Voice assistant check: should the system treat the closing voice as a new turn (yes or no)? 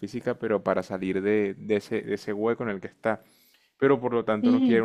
no